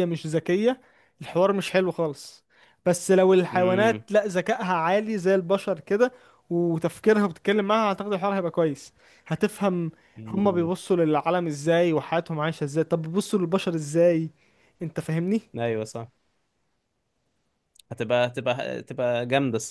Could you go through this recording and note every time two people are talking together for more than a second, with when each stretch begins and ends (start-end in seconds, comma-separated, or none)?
none